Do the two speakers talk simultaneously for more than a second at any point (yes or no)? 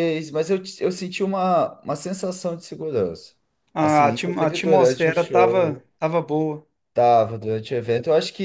yes